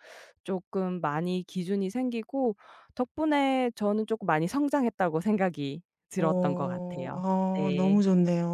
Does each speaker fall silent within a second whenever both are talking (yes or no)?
no